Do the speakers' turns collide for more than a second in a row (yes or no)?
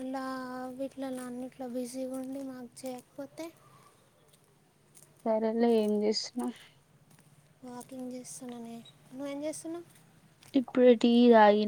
no